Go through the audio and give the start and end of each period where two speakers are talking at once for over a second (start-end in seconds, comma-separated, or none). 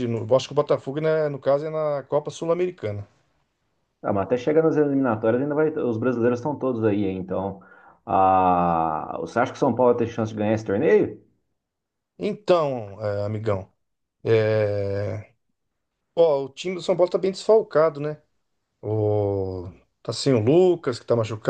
none